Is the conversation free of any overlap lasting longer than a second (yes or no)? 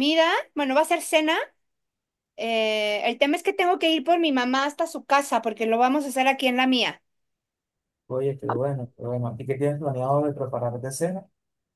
yes